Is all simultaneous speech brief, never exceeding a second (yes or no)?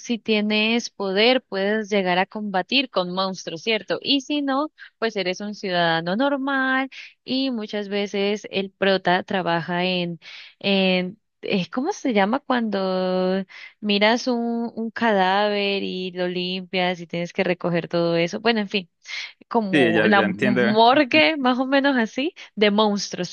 no